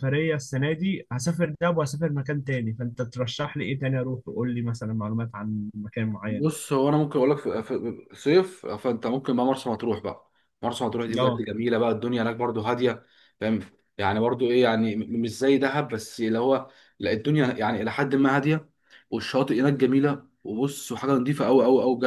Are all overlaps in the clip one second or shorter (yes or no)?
yes